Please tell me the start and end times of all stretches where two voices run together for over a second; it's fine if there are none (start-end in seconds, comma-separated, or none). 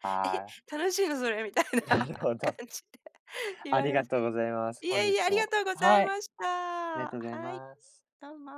4.8-6.3